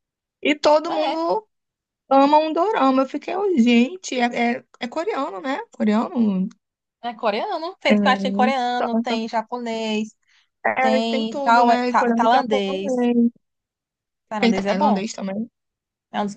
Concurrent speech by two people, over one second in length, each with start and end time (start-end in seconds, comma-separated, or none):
10.8-13.1